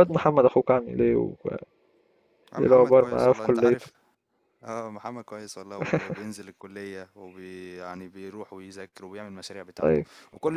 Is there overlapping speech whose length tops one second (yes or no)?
yes